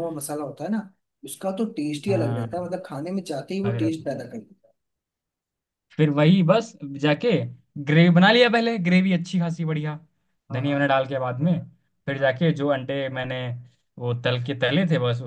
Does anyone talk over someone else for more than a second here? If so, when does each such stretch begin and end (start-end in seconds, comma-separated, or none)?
none